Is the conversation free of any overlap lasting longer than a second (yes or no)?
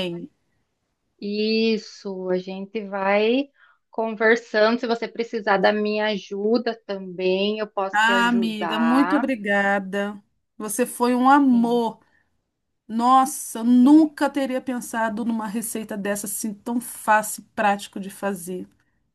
no